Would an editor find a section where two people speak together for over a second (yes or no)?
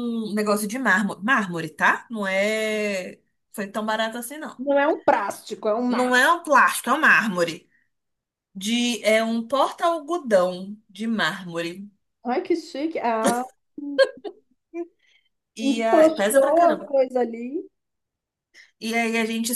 yes